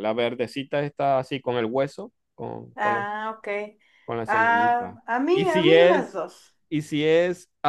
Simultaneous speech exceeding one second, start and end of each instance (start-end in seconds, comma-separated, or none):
4.3-6.2